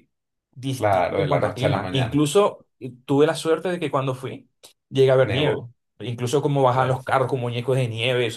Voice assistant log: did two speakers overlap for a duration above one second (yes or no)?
yes